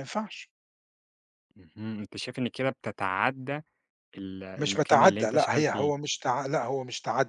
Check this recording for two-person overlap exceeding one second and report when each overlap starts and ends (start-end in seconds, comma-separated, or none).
4.6-5.9